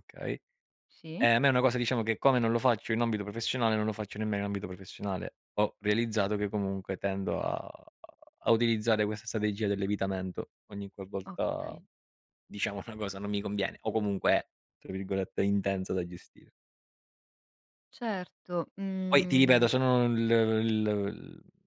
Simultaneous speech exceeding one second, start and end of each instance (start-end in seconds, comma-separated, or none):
none